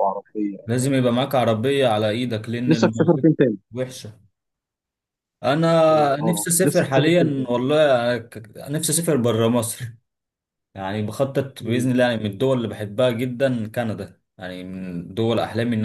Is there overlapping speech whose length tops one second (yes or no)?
yes